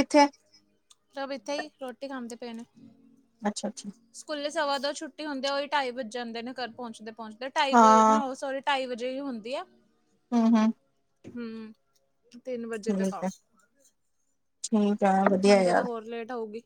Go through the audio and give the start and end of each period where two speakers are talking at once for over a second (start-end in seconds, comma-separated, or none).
none